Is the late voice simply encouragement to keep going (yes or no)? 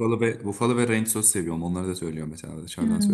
no